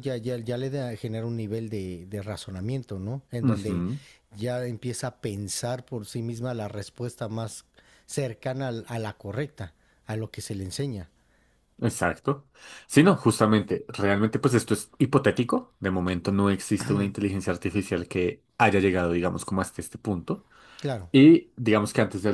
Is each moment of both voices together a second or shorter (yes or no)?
yes